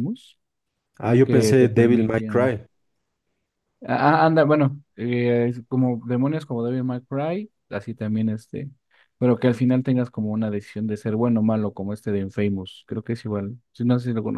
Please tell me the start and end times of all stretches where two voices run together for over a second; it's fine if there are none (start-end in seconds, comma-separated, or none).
1.2-2.6